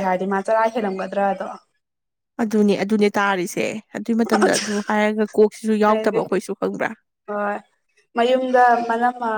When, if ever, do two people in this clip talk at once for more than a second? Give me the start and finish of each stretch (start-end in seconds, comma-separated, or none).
none